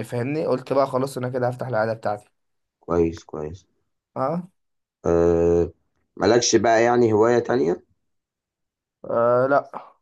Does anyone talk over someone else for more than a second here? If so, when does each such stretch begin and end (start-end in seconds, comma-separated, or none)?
none